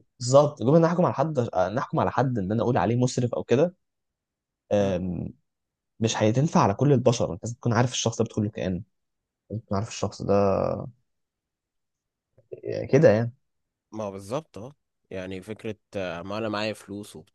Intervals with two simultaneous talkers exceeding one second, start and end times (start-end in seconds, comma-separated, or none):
none